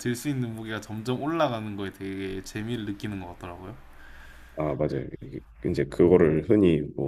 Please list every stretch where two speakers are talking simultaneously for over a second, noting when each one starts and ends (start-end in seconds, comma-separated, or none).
none